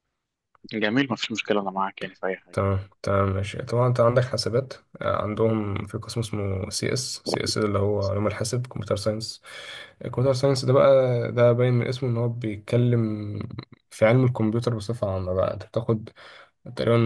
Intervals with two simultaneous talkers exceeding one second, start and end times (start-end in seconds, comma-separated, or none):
none